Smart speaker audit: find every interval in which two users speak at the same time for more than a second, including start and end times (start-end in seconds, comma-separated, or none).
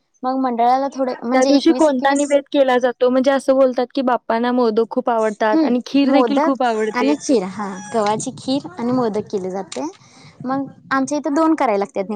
5.5-7.1